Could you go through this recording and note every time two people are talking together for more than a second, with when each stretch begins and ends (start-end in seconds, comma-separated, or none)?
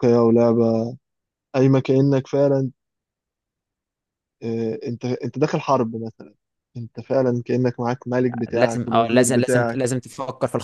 8.5-9.9